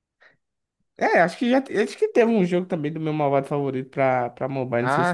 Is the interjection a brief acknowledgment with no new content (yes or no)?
no